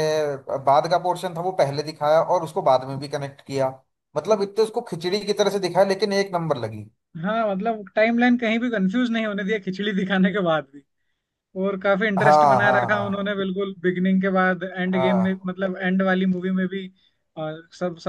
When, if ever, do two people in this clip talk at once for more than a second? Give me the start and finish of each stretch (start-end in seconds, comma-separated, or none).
12.2-13.5